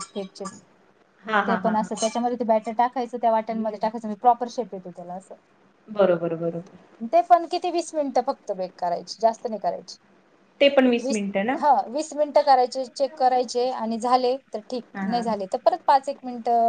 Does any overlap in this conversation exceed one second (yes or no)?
no